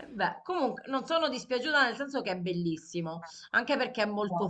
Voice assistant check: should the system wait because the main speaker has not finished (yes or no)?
yes